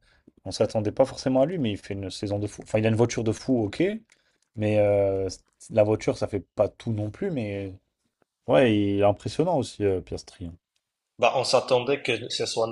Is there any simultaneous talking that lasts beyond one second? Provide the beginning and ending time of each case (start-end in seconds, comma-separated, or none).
none